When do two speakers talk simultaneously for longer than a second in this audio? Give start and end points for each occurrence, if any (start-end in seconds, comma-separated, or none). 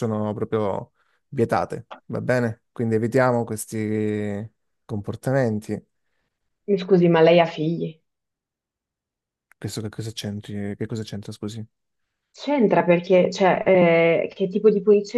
none